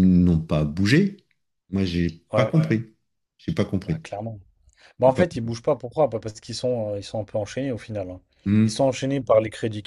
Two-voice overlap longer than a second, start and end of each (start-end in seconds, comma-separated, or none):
none